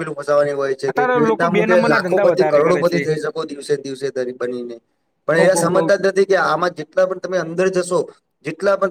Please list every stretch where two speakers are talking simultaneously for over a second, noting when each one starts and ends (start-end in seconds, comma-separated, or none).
0.9-3.0